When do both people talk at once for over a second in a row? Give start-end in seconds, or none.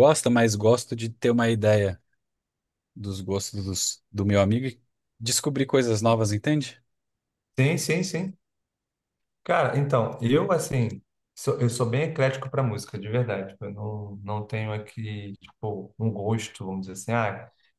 none